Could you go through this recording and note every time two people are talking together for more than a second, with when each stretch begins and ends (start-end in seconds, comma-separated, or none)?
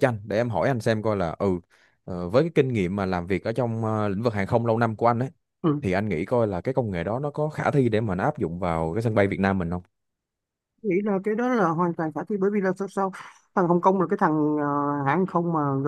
none